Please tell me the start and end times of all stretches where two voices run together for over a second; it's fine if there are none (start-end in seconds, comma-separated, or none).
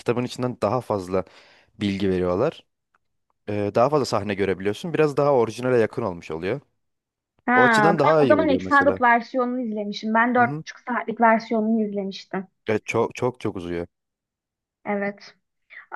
7.5-9.0